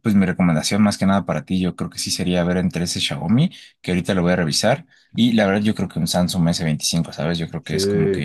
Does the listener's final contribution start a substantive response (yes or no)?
yes